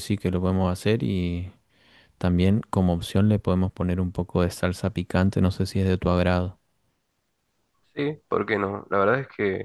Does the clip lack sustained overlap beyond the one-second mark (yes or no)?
yes